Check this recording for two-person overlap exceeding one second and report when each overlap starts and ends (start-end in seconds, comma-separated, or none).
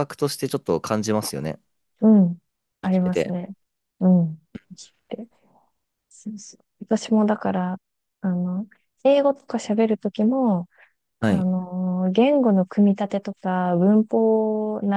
none